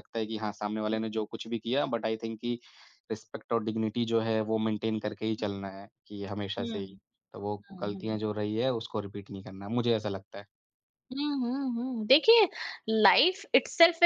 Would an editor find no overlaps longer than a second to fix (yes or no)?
yes